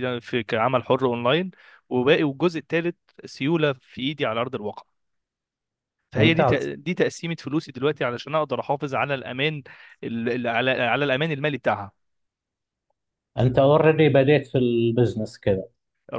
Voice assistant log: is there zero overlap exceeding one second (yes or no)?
yes